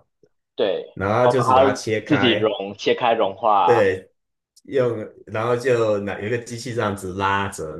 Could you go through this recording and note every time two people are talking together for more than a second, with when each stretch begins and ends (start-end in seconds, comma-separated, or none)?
0.9-2.5